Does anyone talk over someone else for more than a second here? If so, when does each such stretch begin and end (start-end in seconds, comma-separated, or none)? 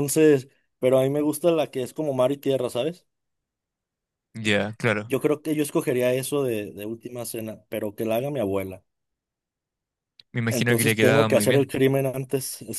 10.5-11.7